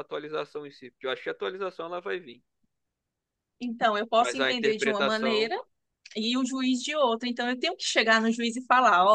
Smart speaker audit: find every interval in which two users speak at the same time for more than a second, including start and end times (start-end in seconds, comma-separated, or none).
4.2-5.5